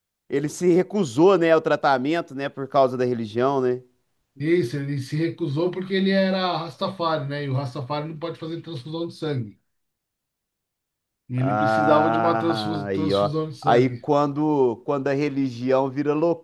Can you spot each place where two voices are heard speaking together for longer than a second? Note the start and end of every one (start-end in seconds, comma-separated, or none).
11.4-14.0